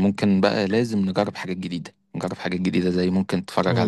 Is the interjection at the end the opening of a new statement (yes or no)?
no